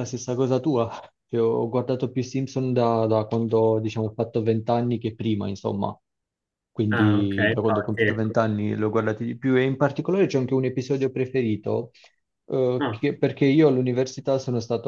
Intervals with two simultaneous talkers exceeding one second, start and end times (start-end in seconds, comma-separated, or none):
6.9-8.3